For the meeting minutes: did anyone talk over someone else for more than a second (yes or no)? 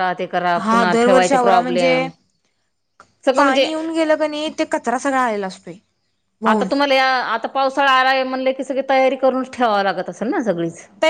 yes